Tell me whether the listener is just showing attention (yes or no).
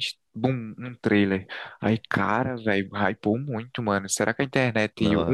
yes